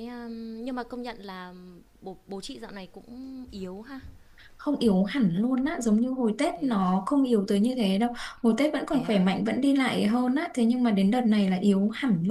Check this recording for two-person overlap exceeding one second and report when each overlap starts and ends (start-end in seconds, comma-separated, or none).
none